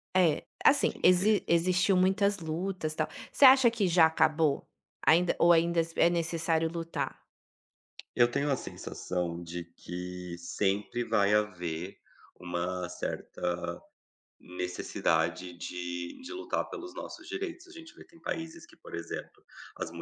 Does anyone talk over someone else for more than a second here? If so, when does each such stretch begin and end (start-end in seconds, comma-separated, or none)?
none